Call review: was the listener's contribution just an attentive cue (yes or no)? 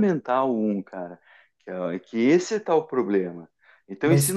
yes